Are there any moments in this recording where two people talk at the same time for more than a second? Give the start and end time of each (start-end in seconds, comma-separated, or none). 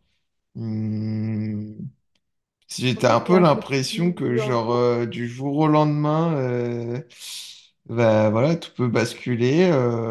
2.9-4.8